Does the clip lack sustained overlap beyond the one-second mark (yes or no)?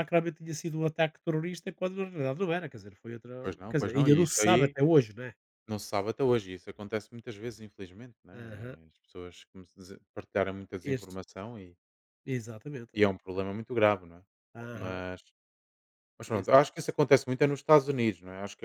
no